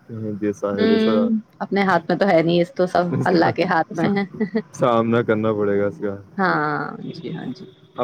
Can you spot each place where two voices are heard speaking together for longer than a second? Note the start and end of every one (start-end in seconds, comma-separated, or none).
none